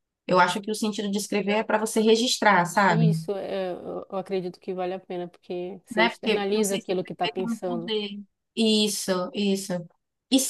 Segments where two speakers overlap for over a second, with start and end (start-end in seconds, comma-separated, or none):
5.9-7.9